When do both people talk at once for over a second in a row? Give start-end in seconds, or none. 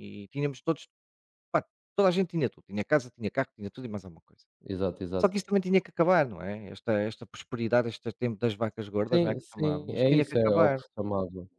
9.1-10.8